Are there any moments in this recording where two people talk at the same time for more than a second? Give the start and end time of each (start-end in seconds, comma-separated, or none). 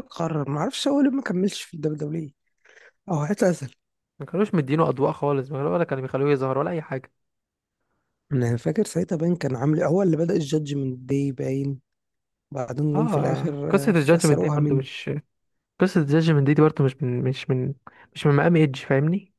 12.9-14.9